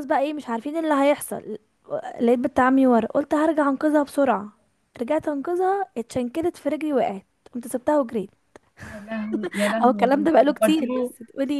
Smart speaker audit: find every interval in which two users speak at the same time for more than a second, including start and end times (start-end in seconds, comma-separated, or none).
9.8-11.1